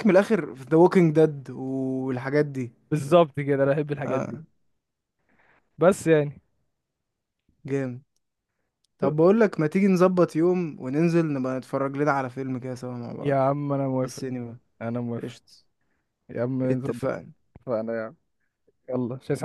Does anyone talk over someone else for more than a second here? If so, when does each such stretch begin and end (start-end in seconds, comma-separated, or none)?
none